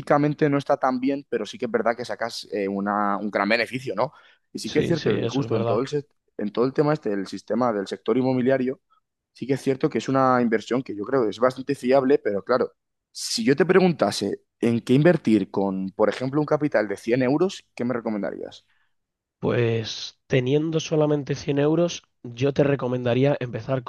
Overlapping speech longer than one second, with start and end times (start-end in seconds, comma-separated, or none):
4.6-5.8